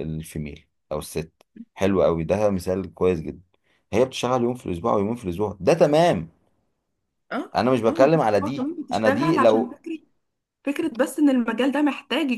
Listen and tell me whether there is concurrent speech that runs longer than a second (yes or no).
yes